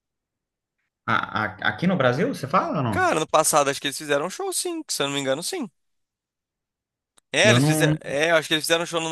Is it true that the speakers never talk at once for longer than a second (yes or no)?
yes